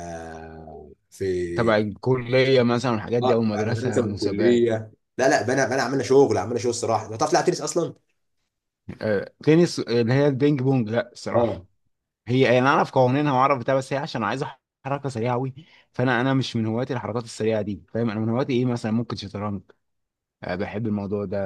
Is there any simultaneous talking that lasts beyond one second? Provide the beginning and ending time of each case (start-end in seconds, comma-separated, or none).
3.2-4.7